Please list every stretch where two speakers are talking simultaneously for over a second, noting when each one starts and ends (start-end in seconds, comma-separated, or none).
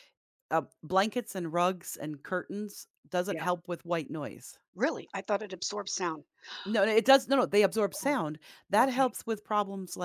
none